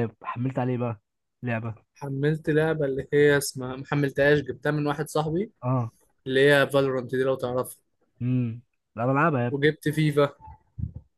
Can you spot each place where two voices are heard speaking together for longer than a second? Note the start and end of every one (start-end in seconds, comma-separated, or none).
none